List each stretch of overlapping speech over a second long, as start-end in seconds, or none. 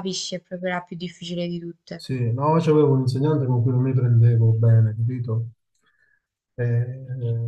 none